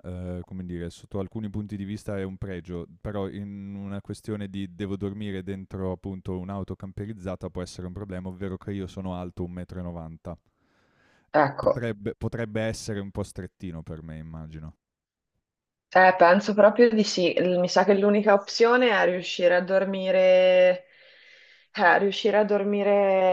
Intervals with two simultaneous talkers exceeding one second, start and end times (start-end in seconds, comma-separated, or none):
none